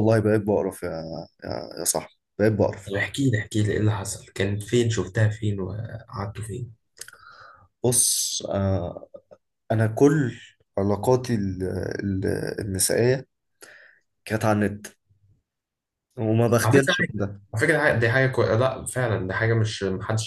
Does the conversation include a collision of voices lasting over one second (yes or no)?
no